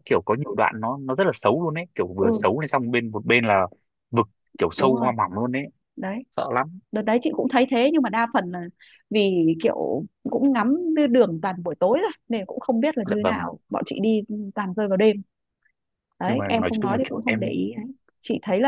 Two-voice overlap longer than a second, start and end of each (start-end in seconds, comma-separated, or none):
16.3-17.6